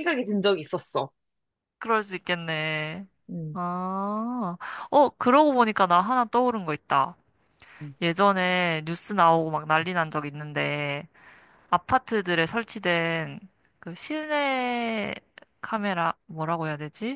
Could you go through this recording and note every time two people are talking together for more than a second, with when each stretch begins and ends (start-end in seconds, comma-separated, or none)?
none